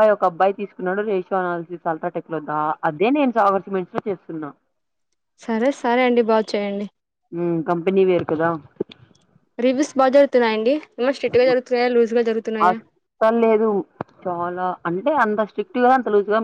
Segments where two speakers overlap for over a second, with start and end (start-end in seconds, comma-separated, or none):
none